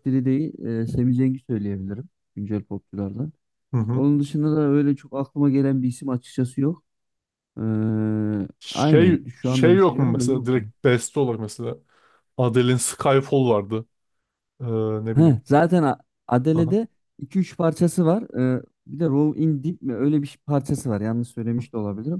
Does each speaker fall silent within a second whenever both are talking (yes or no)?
no